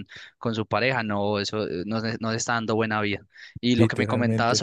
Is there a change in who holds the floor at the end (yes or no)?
no